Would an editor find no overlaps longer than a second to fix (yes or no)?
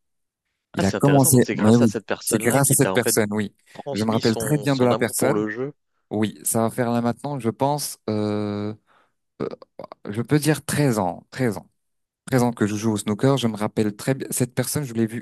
no